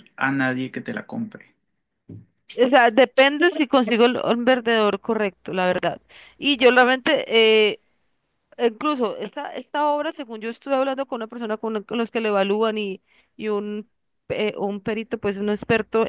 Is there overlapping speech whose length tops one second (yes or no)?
no